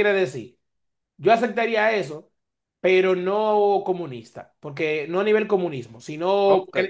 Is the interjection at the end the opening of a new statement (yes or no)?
no